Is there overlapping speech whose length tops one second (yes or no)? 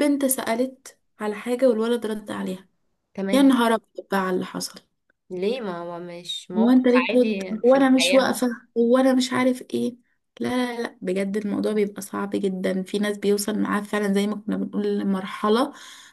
yes